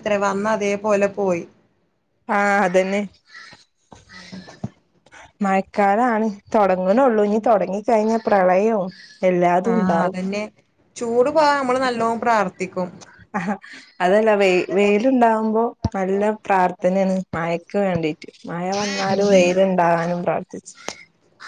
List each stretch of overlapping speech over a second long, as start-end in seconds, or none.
none